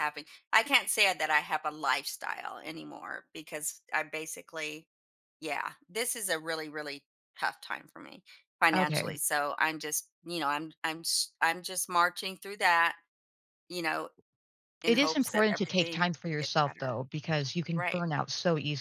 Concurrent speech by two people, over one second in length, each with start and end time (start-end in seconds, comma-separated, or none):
14.8-17.0